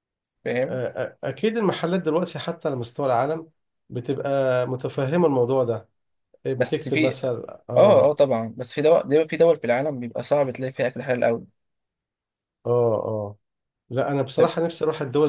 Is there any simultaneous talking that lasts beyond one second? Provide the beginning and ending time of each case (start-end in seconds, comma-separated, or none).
none